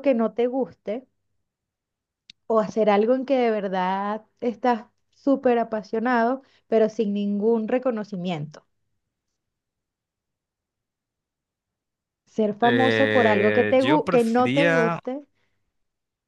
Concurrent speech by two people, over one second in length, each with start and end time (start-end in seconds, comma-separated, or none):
12.6-15.0